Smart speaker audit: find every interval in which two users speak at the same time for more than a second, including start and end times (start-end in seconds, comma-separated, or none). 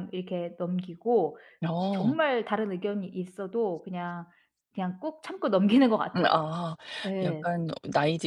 none